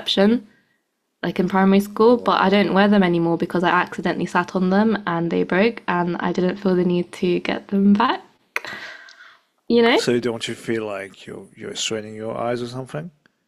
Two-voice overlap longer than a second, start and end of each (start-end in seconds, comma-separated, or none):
none